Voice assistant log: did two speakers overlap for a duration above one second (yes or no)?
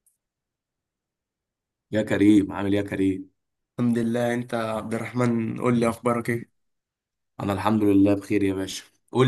no